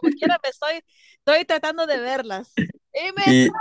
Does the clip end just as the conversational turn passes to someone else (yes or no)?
no